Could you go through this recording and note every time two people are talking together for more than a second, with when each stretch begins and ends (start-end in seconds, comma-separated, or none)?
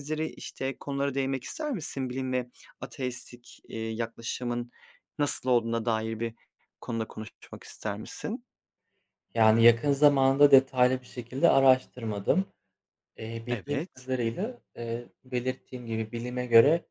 none